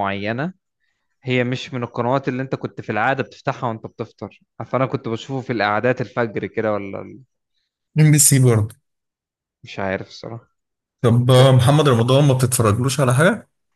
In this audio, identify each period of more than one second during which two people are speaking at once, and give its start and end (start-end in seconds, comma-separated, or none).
none